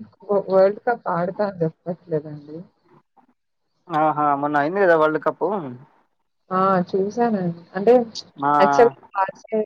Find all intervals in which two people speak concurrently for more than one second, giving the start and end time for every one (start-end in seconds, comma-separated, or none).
none